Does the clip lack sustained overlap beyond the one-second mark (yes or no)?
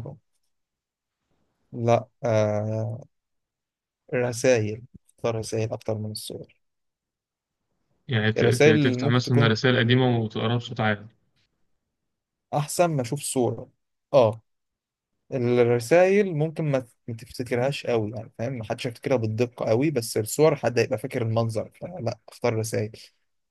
no